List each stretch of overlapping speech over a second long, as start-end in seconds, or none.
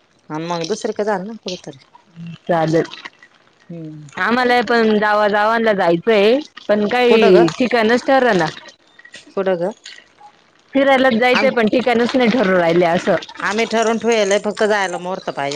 none